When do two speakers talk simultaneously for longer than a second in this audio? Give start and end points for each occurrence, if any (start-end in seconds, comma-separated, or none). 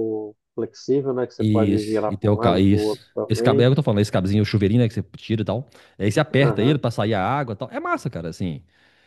1.4-3.7